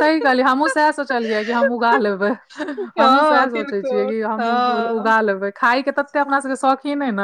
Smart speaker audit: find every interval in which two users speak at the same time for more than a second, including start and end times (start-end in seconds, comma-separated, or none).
3.0-4.9